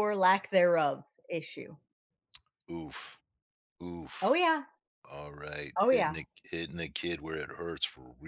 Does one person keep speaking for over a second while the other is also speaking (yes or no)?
no